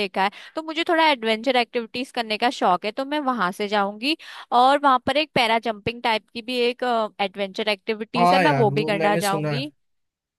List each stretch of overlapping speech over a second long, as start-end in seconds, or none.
8.2-9.7